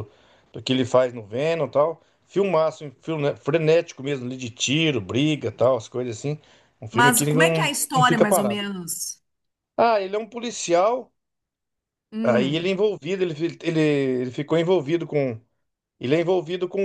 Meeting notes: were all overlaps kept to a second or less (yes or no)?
no